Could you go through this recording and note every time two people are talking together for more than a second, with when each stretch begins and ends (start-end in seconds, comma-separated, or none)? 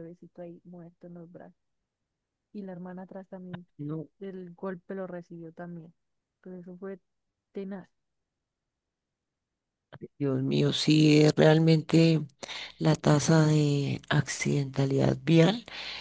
none